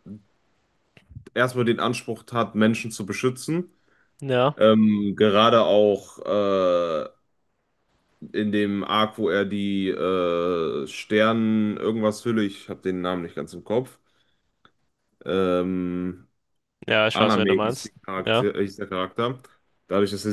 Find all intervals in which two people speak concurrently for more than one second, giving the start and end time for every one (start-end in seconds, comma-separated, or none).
17.1-18.5